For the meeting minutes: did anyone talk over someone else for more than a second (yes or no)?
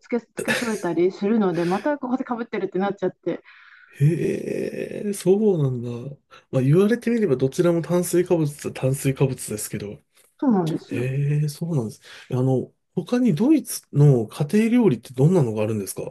no